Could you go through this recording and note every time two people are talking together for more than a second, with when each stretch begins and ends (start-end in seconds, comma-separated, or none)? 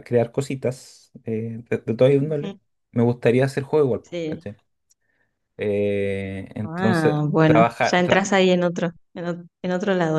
6.6-8.3